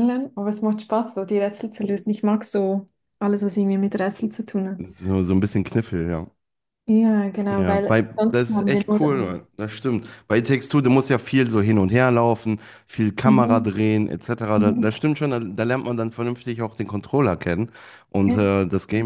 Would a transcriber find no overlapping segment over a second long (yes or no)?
no